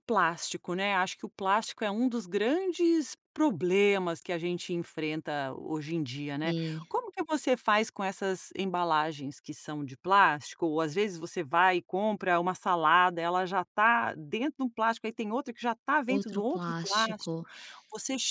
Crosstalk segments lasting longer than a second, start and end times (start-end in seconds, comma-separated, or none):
16.1-17.3